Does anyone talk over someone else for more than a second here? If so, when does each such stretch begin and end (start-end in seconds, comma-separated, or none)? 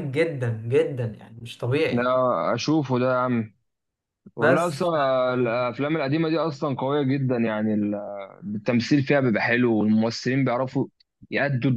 none